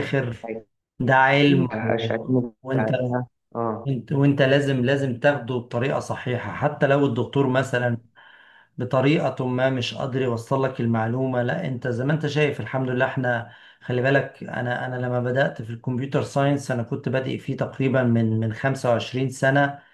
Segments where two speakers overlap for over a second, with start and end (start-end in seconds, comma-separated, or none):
1.4-2.9